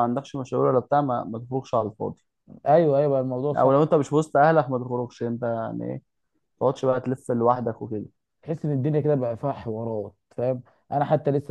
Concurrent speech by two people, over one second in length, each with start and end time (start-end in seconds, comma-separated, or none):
none